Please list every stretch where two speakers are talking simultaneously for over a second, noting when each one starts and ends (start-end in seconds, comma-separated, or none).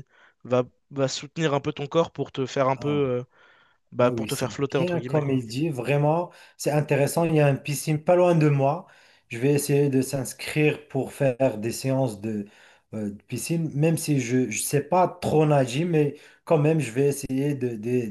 4.0-5.4